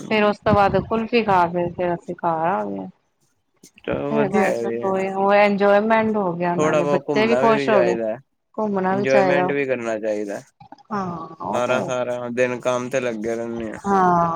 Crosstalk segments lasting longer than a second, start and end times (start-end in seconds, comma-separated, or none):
6.4-8.0